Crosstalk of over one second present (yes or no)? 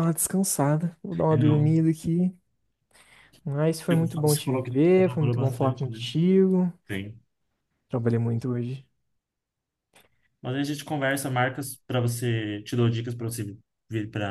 yes